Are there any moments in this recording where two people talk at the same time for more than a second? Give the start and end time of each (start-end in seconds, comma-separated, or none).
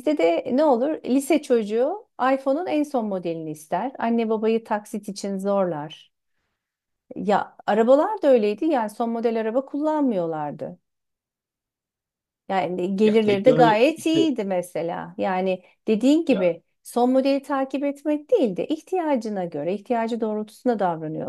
13.0-14.3